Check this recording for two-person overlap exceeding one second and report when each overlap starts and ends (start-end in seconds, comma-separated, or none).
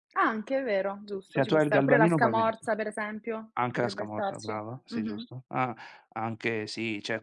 1.3-2.7, 3.5-5.2